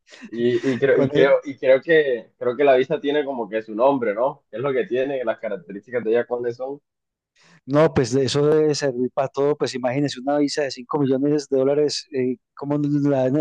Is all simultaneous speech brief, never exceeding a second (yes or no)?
yes